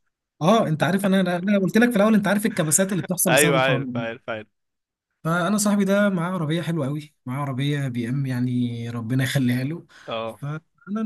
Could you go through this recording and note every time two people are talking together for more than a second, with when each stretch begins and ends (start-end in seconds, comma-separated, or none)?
none